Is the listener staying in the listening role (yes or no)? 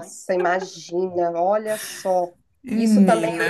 yes